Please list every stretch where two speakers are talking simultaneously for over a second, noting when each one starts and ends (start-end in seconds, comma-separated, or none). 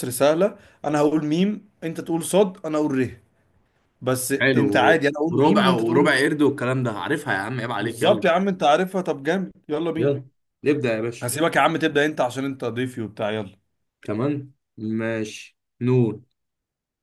4.4-6.2